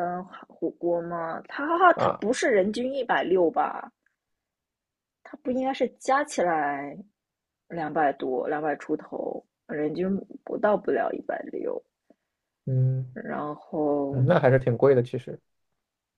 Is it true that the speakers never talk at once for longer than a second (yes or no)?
yes